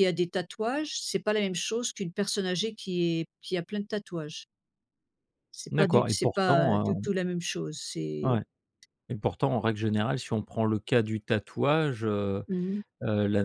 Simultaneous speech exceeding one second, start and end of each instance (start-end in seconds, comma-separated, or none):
5.7-7.0